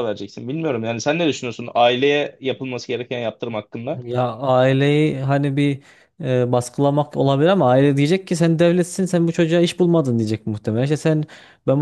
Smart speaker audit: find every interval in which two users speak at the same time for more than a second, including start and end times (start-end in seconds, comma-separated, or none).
none